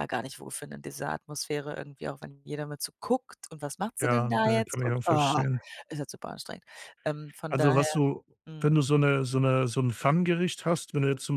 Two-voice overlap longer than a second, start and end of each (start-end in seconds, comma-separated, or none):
4.0-5.4